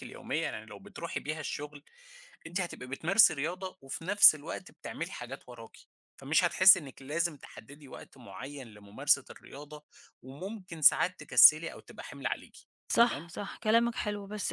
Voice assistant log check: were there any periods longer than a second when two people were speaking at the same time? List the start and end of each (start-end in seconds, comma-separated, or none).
none